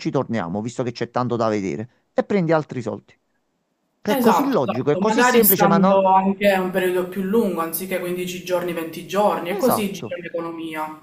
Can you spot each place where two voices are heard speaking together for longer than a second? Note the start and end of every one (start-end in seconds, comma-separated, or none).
4.0-6.0